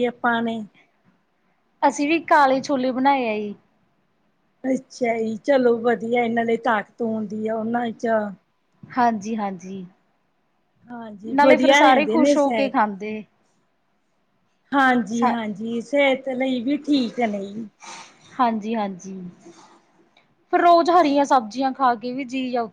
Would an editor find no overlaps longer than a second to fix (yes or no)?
no